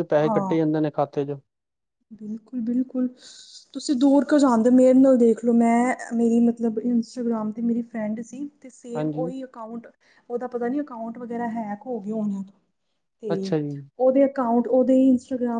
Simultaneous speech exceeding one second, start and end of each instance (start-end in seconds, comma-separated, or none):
none